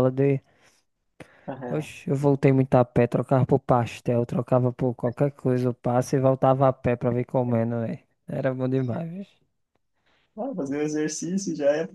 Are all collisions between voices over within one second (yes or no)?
yes